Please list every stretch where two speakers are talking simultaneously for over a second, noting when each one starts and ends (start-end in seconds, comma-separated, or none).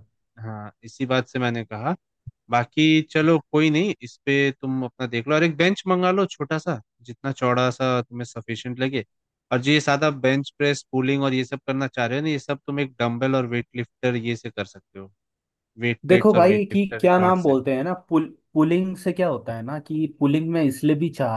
16.1-17.6